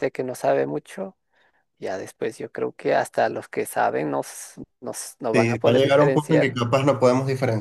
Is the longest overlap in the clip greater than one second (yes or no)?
yes